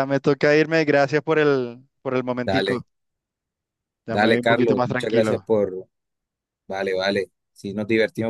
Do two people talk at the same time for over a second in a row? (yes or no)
yes